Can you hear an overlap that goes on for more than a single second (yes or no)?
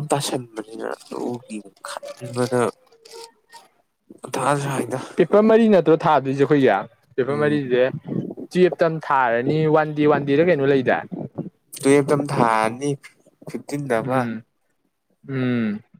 no